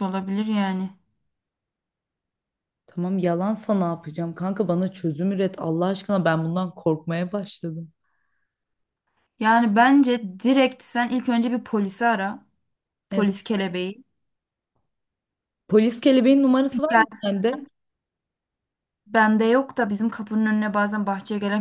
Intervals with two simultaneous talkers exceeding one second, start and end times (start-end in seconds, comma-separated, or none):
none